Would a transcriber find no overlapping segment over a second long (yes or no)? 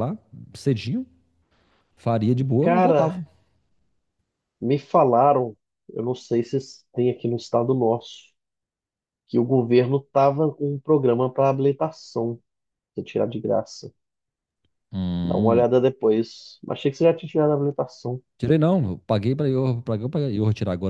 yes